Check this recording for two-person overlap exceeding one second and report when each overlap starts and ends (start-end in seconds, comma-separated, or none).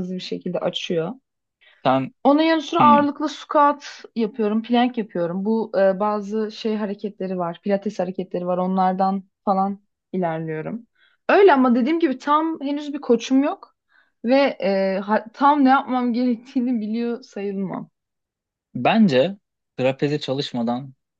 none